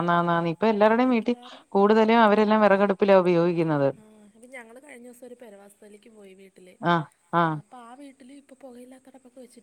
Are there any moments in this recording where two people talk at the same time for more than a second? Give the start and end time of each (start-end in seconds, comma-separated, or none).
none